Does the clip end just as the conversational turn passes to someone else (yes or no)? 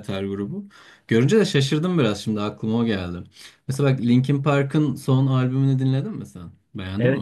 yes